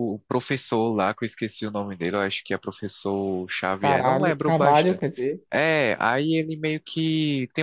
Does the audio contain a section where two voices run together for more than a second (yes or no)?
yes